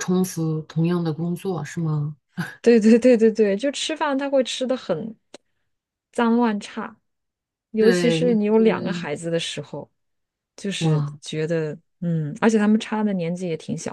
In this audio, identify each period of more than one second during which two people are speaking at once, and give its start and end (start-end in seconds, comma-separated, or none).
7.8-9.1